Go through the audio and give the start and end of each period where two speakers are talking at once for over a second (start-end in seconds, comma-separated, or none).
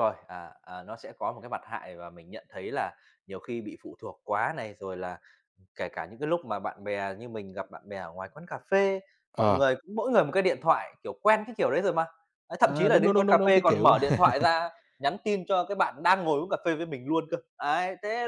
12.6-13.9